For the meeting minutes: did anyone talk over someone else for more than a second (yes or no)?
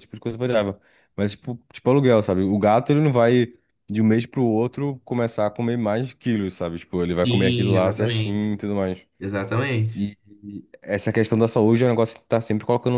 yes